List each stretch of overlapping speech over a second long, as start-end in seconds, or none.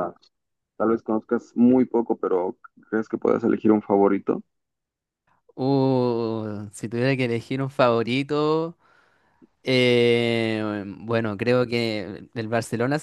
none